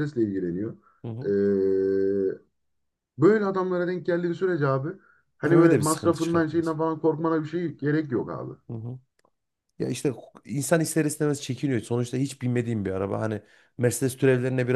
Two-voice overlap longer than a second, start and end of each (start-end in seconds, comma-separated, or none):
5.4-6.8